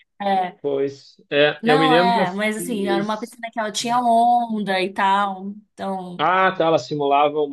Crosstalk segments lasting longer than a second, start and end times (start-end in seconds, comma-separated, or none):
1.6-3.3